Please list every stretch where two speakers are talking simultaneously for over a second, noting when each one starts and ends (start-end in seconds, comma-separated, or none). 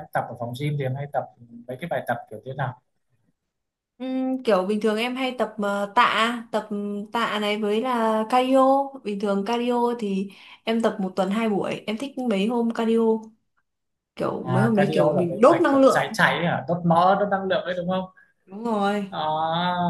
14.4-16.2